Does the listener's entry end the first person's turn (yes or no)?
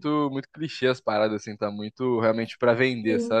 yes